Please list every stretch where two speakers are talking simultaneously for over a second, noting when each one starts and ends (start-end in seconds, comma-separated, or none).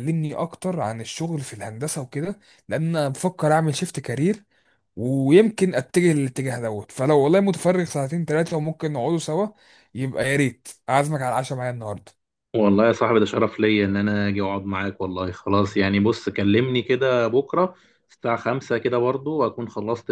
none